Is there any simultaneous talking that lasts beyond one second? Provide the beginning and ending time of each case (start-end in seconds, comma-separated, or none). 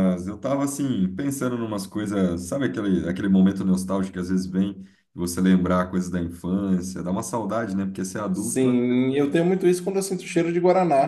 none